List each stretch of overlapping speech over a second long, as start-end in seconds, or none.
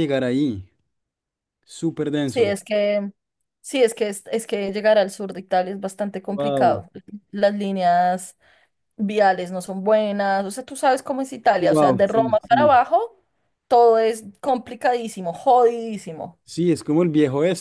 11.6-12.8